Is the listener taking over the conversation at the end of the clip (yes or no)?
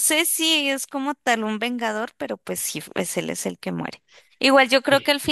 no